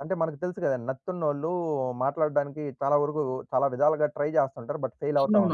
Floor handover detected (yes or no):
yes